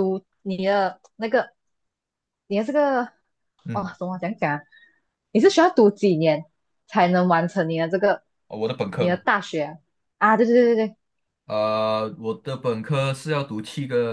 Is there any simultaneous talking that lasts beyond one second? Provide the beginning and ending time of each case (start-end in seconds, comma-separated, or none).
none